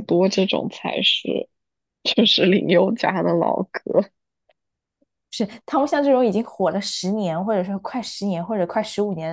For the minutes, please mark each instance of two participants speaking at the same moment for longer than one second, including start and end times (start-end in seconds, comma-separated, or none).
none